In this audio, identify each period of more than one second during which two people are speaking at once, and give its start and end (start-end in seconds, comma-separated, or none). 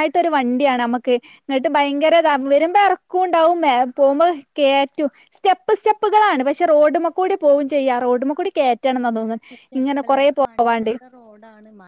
none